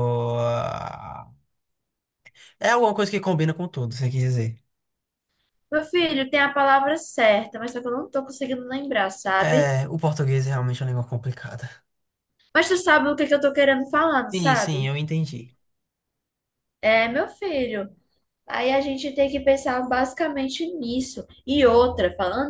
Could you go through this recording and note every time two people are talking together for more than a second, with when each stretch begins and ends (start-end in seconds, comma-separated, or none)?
none